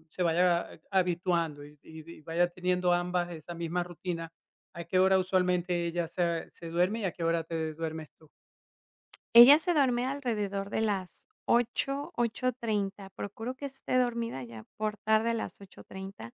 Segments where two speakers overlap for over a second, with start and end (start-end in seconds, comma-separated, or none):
none